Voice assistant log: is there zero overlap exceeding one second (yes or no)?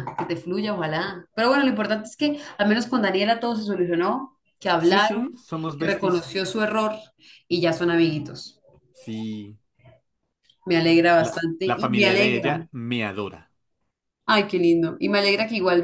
no